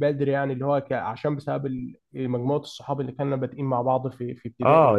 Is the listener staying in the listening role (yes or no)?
no